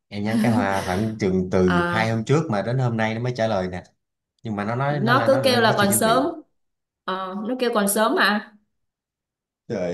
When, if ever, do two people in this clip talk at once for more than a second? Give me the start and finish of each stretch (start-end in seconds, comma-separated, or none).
4.9-6.2